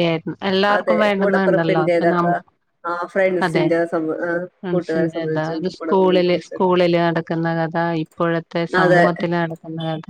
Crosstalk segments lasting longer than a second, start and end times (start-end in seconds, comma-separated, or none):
0.8-2.3, 4.6-6.7